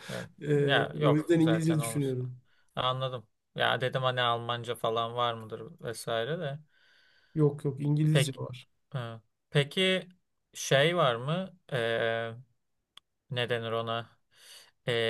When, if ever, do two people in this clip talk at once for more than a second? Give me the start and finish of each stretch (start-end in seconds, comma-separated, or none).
0.7-2.1